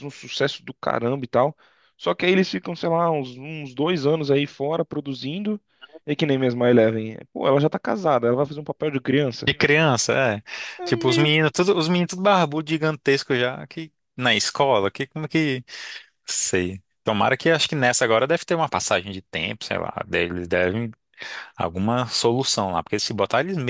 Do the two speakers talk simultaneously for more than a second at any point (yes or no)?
no